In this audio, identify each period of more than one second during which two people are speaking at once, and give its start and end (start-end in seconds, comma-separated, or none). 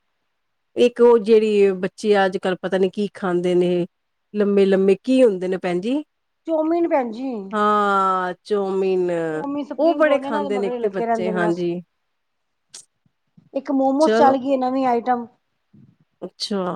10.1-11.6